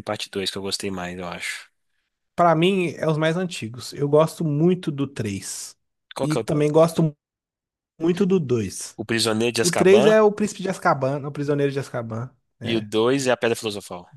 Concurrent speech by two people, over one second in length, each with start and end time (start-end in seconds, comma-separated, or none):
none